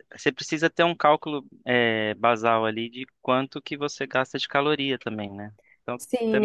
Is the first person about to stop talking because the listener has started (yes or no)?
yes